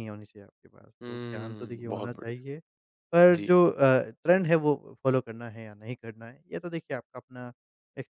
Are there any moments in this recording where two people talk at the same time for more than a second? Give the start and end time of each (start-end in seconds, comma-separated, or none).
1.0-2.4